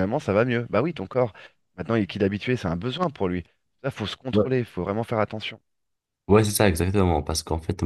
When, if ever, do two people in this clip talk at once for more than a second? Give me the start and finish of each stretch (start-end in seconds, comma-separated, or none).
none